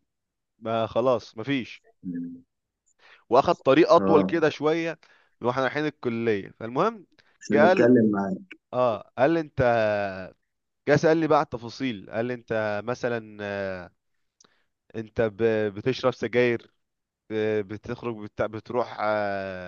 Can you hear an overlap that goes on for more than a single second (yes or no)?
no